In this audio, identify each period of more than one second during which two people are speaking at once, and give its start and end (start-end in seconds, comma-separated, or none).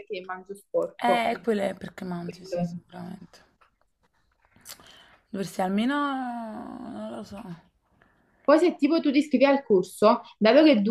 none